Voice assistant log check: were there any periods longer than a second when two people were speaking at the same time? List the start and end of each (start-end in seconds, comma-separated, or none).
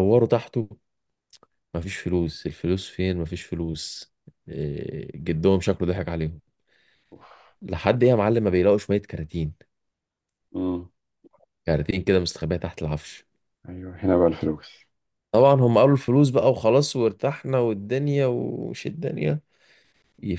none